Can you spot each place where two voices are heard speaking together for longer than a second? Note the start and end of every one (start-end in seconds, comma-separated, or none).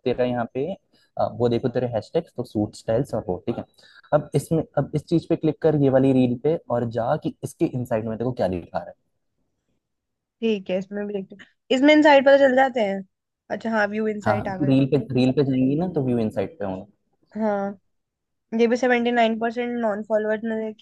none